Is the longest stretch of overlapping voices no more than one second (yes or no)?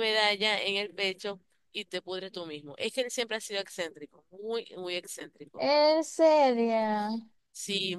yes